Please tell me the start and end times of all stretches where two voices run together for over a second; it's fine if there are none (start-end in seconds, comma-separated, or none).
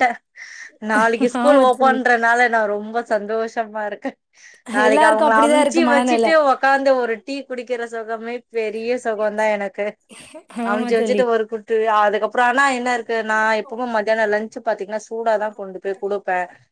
4.9-6.3